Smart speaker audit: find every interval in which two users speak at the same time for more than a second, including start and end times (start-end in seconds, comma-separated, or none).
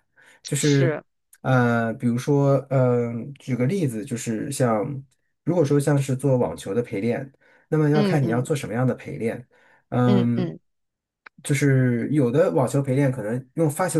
none